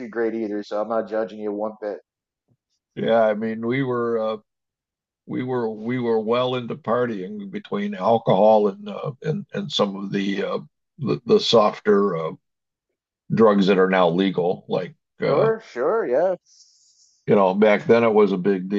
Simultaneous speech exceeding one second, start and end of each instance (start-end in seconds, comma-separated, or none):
none